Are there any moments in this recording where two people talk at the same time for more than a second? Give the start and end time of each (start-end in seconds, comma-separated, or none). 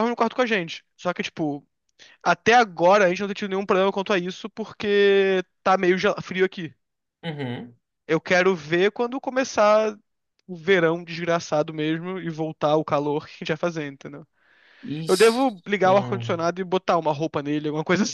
15.1-16.4